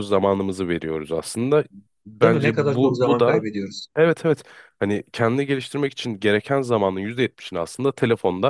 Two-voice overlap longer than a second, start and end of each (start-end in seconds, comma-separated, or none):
2.2-3.4